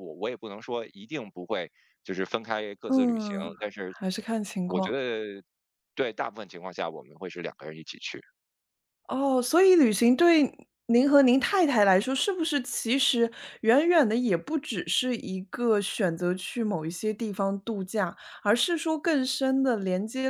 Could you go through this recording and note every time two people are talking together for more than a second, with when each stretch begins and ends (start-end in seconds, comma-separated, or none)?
none